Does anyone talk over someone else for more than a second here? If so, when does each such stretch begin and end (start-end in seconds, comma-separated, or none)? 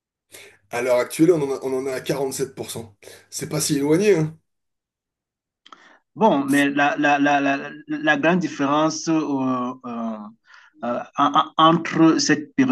none